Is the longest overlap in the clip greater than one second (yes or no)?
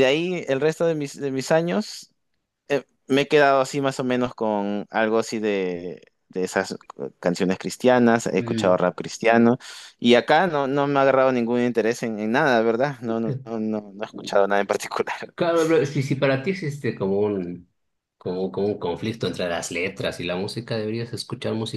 no